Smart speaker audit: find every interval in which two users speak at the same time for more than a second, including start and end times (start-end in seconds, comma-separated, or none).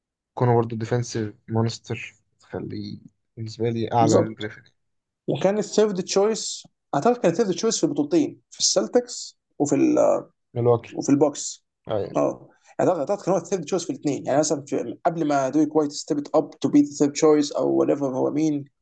none